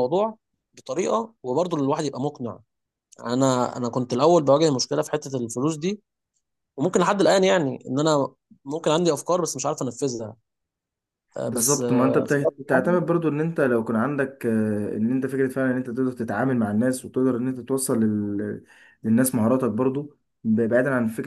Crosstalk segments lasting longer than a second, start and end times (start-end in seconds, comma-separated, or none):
11.5-13.0